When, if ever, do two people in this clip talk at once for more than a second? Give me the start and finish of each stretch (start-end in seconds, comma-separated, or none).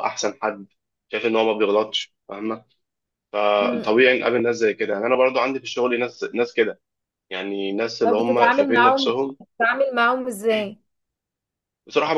8.0-9.4